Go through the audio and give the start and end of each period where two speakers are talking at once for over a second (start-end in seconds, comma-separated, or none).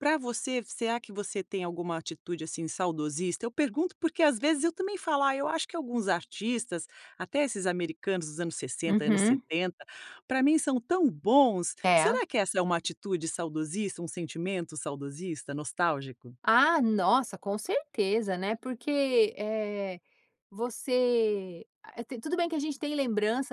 none